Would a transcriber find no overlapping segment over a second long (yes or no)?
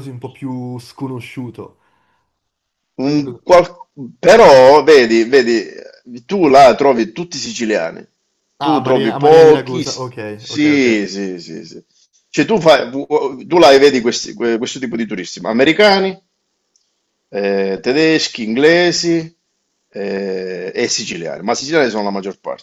no